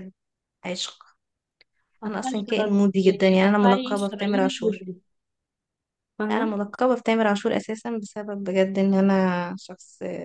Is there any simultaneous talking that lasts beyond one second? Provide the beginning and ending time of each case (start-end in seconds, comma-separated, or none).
2.1-4.9